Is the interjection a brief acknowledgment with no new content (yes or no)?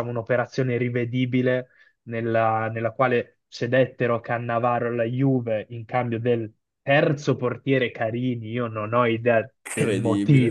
yes